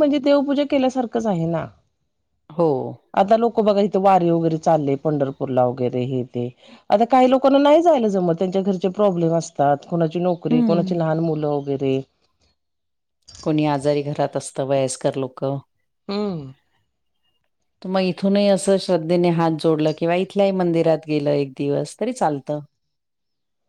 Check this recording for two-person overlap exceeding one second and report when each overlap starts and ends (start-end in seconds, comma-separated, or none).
none